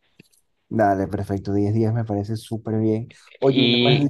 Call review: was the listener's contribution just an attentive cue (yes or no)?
yes